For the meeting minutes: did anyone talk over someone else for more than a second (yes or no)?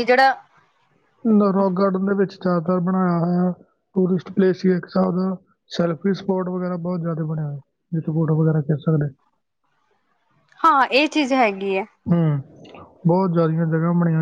no